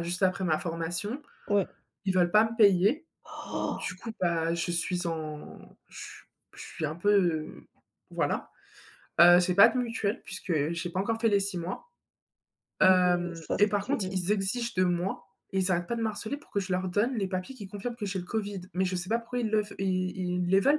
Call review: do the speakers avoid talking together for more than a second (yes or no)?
no